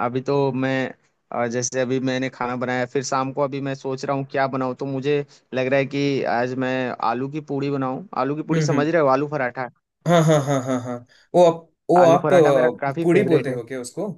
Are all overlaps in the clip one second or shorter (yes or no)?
no